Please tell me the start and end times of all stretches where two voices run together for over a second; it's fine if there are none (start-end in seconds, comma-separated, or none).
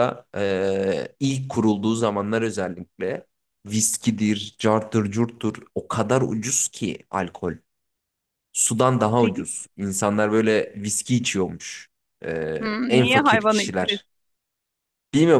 12.6-14.0